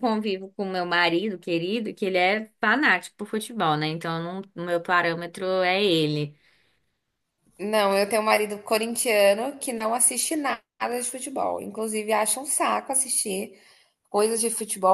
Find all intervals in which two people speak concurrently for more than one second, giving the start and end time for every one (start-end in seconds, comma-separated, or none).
none